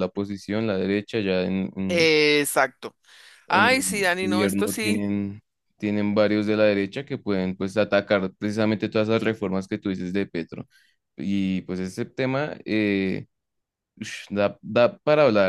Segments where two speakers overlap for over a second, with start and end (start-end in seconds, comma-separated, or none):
3.5-5.0